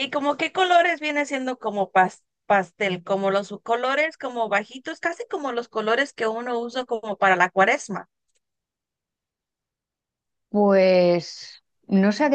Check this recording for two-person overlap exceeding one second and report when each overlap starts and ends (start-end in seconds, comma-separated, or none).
none